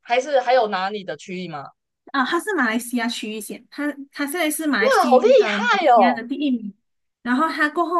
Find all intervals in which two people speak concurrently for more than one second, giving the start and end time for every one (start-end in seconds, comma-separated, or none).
4.8-6.2